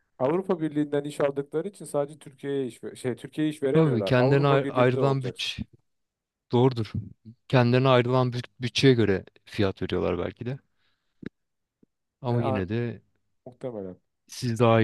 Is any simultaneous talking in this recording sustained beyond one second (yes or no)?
yes